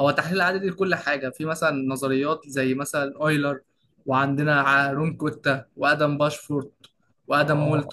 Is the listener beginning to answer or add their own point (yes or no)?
yes